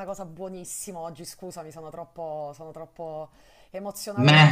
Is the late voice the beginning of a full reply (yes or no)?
yes